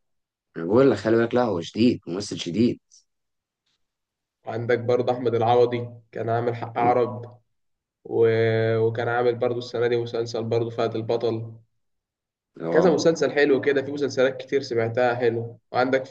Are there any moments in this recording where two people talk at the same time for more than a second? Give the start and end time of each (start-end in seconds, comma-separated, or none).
none